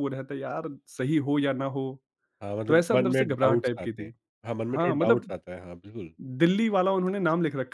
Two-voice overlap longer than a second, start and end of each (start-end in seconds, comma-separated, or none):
2.7-4.1